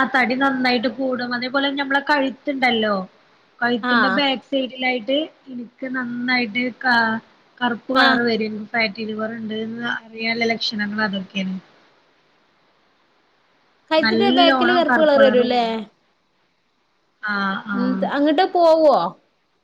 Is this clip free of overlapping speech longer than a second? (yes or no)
no